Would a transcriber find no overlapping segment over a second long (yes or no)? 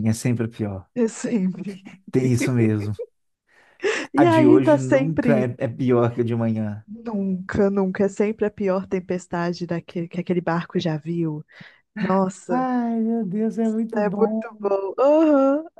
no